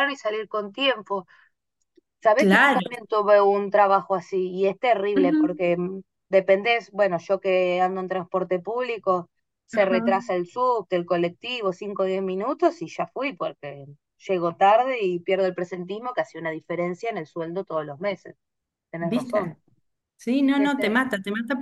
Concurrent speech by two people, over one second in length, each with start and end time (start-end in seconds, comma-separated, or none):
none